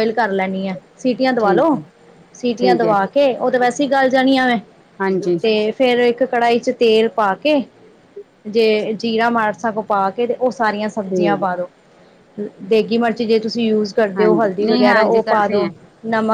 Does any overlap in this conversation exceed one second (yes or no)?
yes